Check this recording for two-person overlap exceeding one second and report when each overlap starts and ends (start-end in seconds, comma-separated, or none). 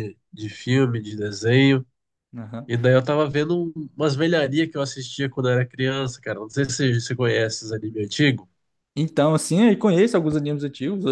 none